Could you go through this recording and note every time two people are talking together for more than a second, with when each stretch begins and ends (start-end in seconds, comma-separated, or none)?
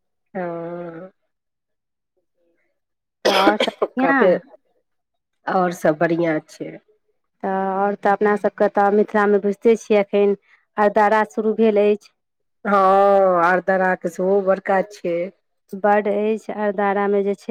none